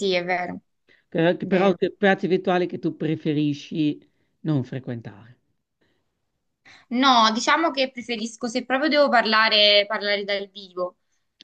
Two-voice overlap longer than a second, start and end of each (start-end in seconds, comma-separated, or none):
none